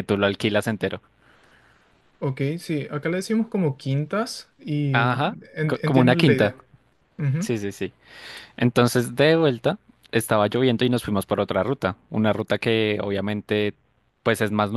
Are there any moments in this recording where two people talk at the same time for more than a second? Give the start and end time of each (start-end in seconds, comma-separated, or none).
4.9-6.5